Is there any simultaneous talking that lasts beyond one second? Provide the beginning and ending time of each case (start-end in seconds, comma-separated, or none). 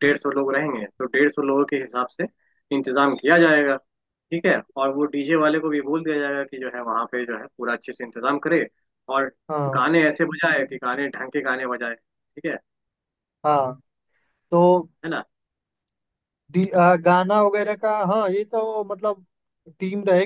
none